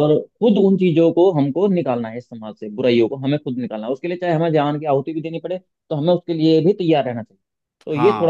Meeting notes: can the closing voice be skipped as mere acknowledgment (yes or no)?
no